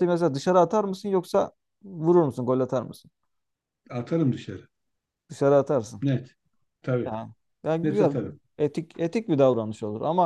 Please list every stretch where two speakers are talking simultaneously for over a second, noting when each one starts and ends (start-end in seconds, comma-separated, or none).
none